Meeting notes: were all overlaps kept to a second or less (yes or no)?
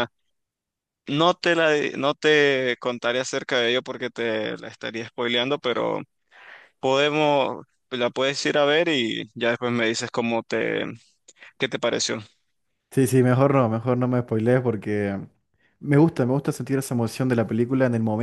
yes